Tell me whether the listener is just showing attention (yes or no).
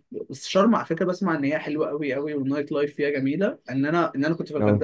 yes